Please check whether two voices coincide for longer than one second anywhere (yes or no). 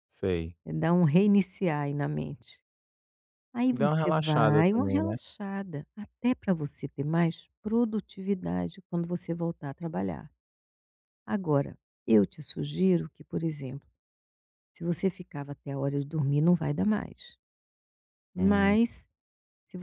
yes